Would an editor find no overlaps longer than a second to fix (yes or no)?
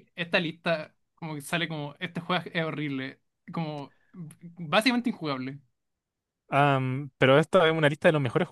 yes